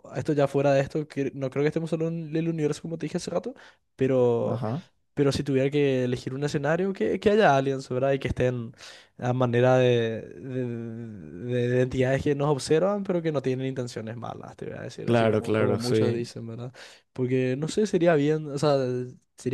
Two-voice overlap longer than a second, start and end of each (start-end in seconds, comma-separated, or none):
15.0-16.3